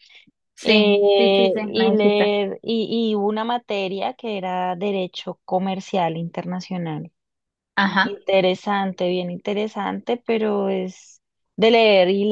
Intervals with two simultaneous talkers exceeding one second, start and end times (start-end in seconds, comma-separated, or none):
0.6-2.3